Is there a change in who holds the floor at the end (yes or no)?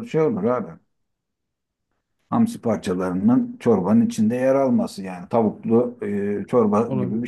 yes